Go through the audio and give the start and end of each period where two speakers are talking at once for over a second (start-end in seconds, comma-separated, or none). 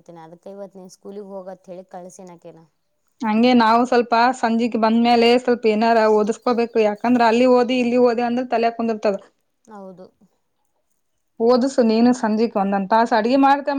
none